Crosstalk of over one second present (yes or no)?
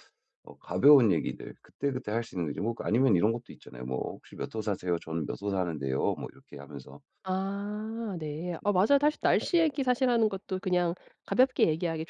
no